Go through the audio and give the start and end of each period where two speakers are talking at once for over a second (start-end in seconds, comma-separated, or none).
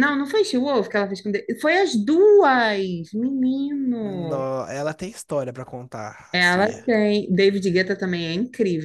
none